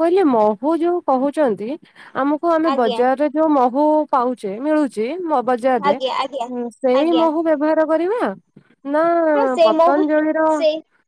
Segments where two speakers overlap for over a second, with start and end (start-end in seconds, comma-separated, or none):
none